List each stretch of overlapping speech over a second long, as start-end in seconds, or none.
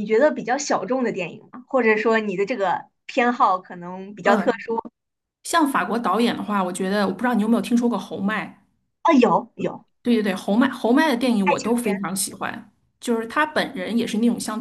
none